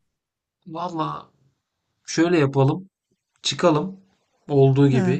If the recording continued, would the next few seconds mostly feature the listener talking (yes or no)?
no